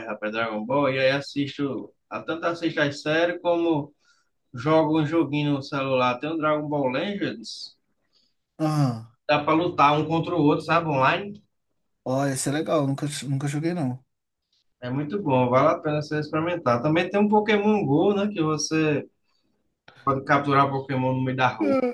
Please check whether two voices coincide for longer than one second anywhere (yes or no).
no